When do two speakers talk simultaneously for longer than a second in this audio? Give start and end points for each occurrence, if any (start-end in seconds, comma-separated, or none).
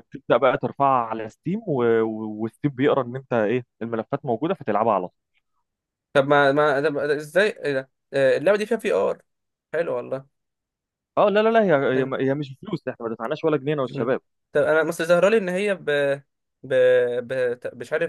none